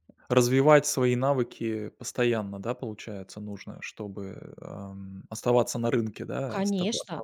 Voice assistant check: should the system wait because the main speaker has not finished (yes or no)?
no